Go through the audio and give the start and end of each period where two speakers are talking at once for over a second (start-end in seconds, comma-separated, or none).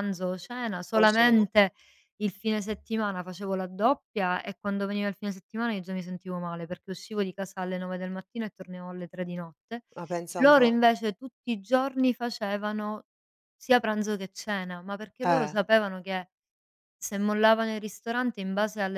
none